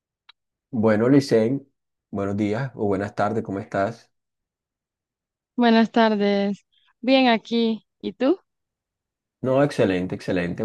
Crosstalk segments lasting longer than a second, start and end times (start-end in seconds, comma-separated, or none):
none